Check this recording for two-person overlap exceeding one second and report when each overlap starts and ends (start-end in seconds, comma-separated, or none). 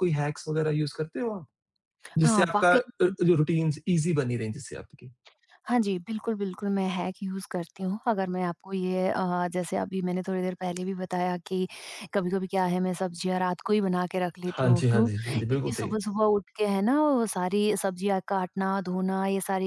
14.5-15.9